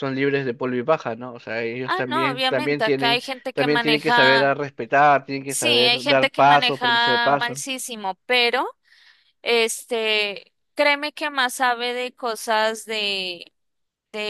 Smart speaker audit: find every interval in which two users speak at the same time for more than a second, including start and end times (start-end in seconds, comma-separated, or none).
1.8-4.5, 5.5-7.6